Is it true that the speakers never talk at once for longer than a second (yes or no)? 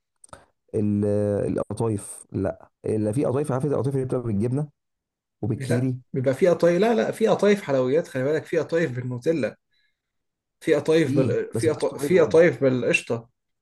no